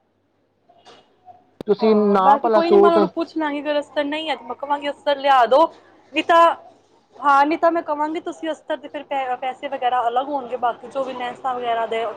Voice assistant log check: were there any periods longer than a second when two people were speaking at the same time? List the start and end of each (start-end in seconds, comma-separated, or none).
1.8-3.2